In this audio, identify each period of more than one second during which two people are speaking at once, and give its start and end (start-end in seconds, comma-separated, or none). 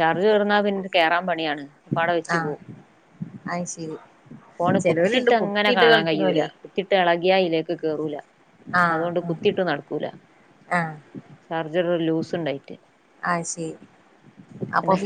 4.8-6.4